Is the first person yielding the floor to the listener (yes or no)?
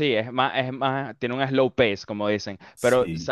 no